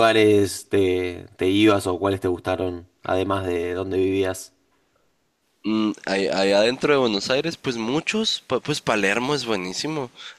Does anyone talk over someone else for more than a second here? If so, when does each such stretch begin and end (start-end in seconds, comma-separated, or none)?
none